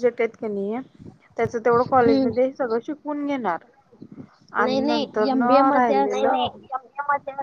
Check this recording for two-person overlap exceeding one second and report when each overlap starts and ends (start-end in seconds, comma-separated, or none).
4.6-6.2